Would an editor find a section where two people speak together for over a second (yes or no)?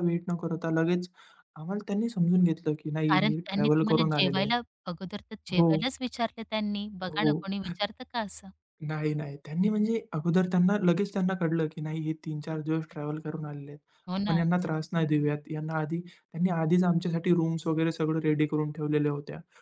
yes